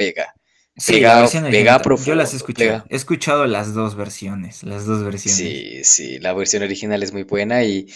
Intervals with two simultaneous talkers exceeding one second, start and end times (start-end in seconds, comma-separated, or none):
0.8-2.9